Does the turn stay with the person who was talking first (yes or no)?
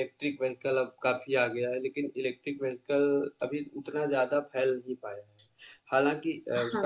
yes